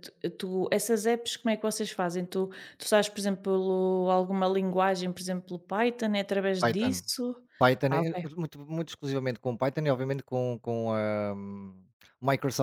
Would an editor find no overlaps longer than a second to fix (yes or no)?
yes